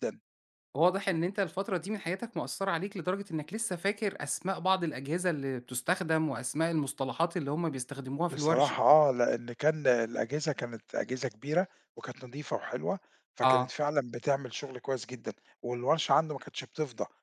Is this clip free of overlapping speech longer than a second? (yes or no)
yes